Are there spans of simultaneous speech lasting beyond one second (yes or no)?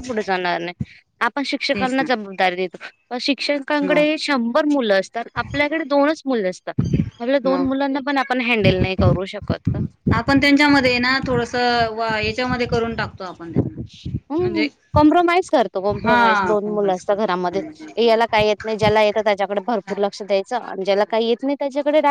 yes